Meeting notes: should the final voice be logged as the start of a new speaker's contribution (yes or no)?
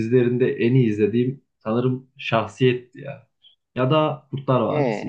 no